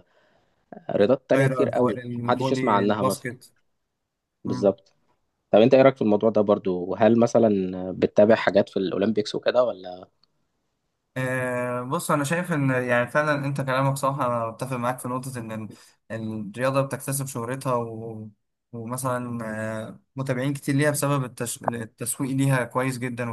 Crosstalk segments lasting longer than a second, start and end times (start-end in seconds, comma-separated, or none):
1.3-3.3